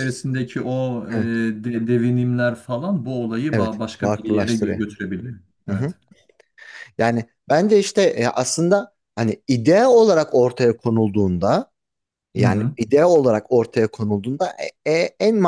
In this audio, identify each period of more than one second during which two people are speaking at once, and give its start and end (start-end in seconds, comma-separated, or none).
3.5-4.8